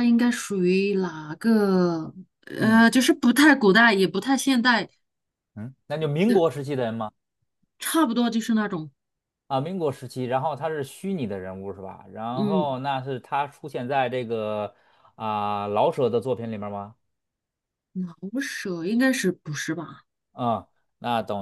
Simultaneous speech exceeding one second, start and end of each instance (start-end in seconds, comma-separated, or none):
none